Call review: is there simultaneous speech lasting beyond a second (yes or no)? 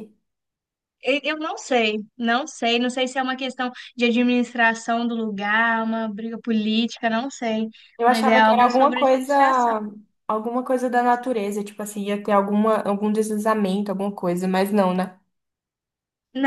yes